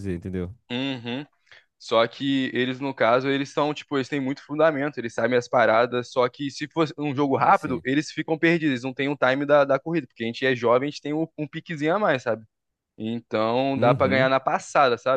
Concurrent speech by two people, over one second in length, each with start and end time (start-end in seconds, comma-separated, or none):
none